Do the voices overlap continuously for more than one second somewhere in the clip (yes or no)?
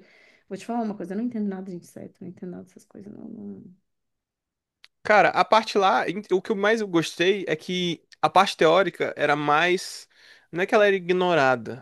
no